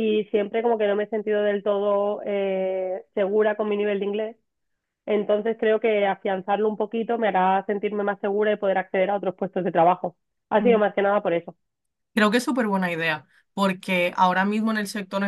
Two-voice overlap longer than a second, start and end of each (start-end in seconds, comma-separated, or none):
none